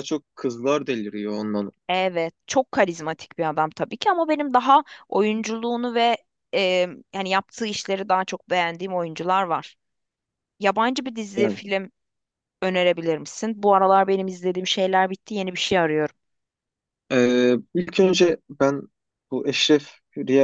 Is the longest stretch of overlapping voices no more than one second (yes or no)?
yes